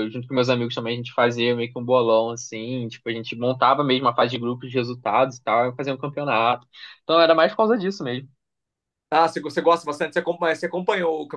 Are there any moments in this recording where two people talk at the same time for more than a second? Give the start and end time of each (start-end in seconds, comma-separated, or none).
none